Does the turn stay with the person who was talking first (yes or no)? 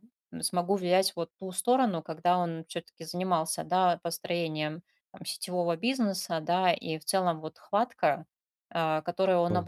yes